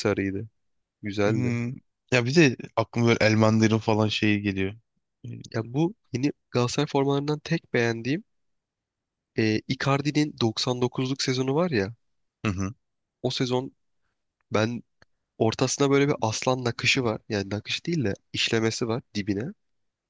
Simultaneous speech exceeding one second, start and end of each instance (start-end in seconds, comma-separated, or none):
none